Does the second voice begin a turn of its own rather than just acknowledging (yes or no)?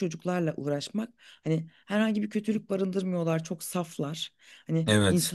no